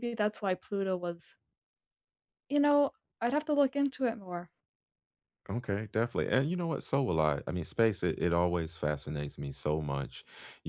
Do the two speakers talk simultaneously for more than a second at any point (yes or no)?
no